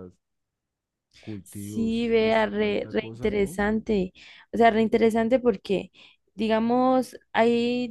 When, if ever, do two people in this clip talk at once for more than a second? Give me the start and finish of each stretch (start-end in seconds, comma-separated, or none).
1.4-3.6